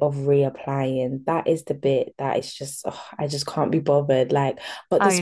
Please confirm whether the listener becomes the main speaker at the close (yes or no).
no